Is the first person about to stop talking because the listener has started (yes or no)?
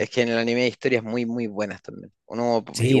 no